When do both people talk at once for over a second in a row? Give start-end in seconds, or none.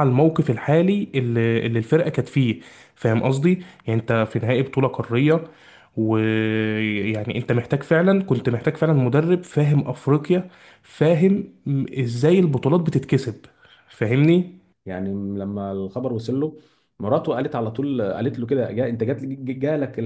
none